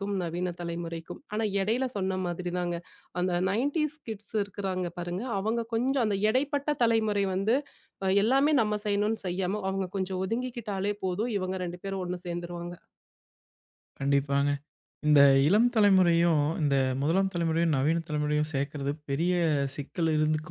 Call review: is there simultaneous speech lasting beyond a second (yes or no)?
no